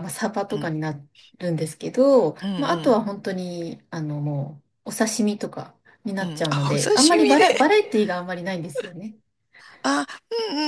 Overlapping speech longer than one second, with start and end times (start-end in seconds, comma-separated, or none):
6.2-7.8